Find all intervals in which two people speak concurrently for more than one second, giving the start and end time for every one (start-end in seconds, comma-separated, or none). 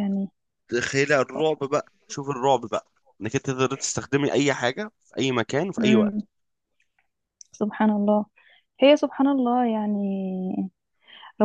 none